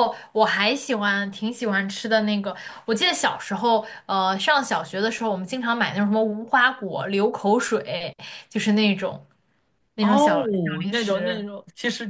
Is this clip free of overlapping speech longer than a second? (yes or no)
no